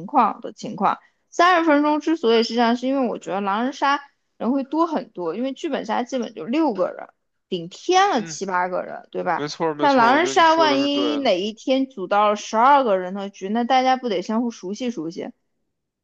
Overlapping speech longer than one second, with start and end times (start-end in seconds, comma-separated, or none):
9.3-11.3